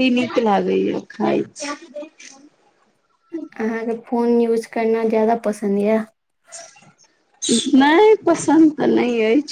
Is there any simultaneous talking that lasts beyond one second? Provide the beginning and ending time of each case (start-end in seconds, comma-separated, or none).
none